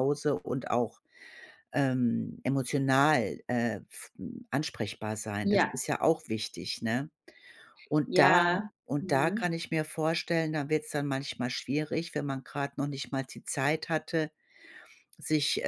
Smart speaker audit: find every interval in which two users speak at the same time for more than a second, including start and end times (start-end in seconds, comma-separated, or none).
8.1-9.4